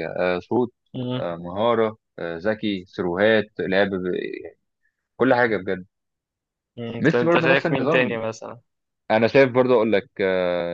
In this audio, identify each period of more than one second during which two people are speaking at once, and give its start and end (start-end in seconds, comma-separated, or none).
7.0-8.2